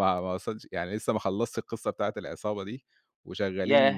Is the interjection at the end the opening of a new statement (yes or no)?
yes